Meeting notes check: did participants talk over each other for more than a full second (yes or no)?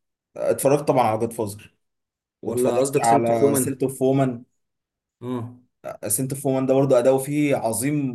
yes